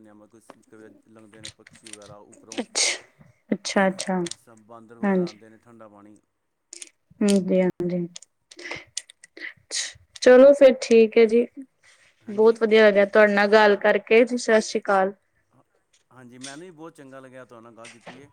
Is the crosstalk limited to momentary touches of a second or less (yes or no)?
yes